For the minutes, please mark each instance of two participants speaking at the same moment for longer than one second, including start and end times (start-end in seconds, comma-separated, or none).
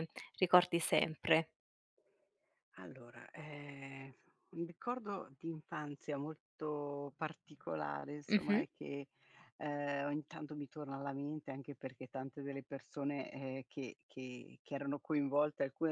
none